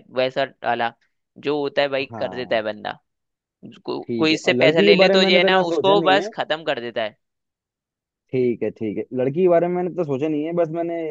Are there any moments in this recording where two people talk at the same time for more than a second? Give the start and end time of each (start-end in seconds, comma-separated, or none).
4.1-6.3